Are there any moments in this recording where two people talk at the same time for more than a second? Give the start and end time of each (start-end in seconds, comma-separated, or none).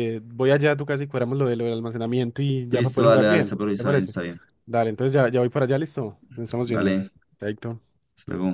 2.7-4.1